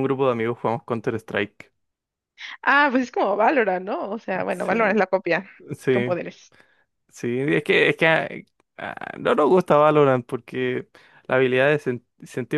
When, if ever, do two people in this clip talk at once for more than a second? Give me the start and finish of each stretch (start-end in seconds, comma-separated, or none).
none